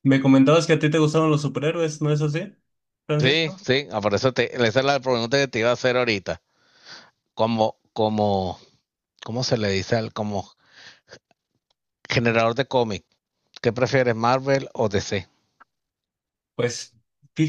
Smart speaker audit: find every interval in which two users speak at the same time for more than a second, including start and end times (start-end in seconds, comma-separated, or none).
none